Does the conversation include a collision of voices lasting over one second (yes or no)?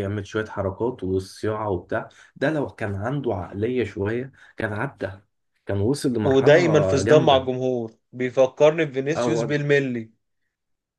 yes